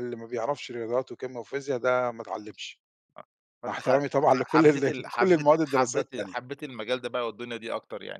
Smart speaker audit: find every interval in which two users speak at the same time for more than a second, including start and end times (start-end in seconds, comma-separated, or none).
3.7-6.4